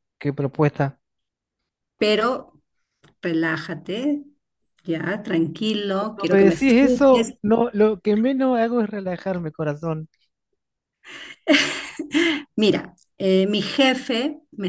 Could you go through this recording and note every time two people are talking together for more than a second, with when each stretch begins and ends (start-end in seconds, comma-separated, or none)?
6.0-7.3